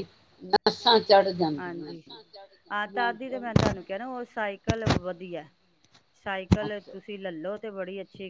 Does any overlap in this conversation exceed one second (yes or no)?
no